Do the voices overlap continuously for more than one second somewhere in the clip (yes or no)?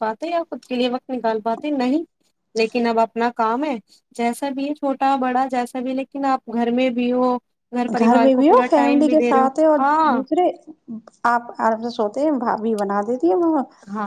yes